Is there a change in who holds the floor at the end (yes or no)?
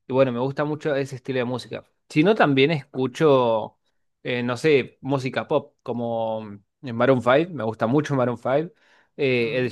no